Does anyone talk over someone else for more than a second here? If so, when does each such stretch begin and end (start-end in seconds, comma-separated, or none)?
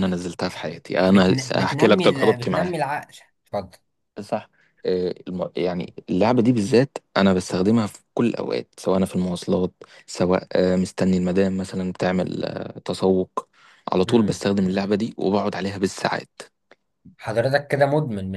1.1-2.8